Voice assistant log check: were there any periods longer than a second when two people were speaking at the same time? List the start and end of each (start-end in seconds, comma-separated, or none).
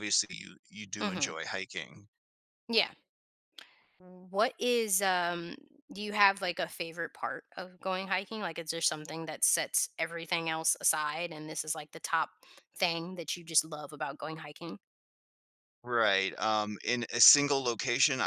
none